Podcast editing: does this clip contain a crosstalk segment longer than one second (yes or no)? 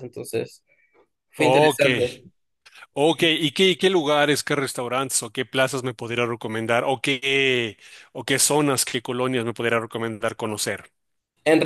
no